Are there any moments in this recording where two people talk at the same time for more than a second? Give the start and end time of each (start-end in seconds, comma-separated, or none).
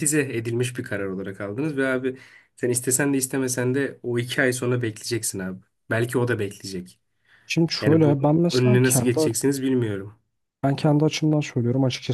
7.8-9.2